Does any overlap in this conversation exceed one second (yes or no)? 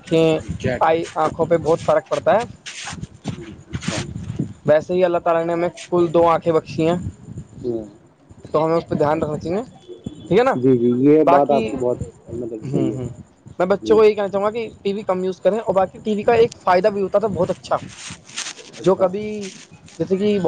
yes